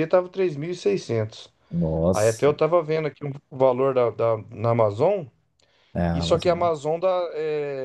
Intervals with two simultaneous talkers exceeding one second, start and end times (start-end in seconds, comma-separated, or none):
none